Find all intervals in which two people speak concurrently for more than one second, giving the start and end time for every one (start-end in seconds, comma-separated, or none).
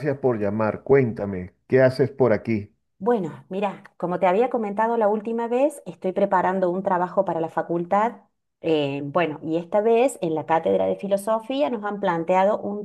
none